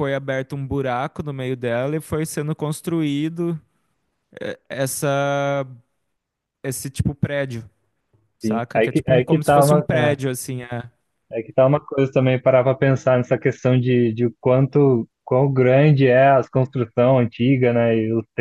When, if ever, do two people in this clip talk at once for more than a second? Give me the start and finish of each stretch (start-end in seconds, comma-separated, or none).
8.4-10.2